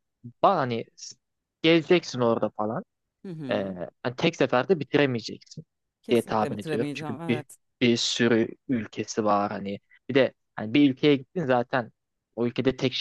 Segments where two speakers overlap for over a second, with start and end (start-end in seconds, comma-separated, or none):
6.1-7.5